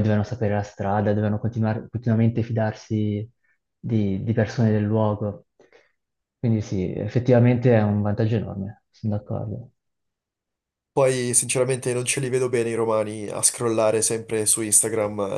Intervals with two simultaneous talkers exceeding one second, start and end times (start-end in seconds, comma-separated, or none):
none